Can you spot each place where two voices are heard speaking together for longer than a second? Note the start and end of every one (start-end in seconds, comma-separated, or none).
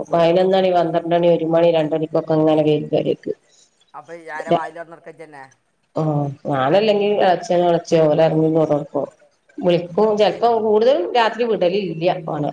none